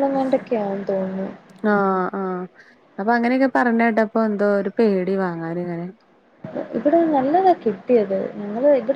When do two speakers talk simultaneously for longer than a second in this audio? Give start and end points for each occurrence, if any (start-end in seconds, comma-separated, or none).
none